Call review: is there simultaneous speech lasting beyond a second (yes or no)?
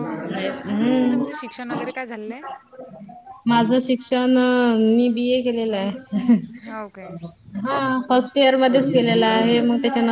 no